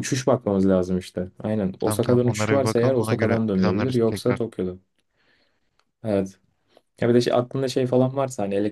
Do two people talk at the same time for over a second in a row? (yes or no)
yes